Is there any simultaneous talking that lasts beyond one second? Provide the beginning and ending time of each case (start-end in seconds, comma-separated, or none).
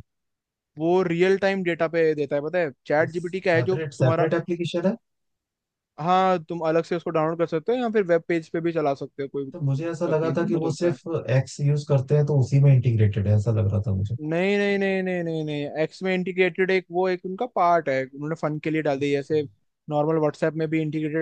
3.0-4.3, 9.5-11.0